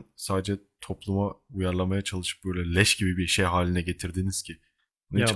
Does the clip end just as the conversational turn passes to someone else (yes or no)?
yes